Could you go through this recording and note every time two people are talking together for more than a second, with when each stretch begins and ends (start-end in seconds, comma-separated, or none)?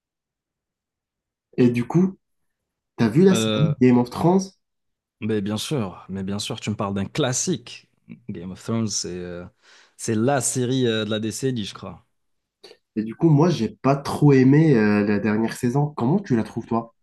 none